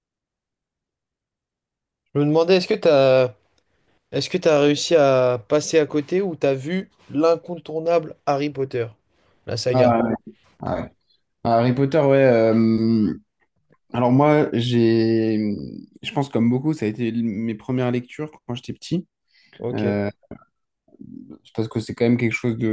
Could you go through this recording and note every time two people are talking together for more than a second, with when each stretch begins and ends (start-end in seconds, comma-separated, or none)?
none